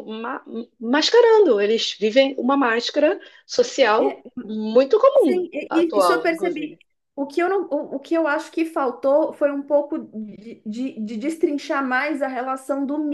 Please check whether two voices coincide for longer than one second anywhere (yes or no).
yes